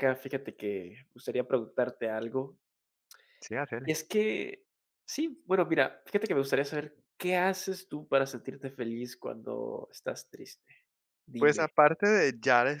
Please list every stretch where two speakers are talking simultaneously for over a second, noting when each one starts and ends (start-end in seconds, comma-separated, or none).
none